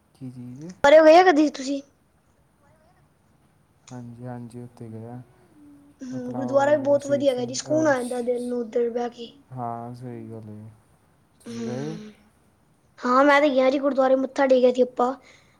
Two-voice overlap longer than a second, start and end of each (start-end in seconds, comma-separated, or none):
6.2-8.5